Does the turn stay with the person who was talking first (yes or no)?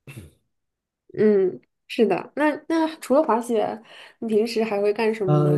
no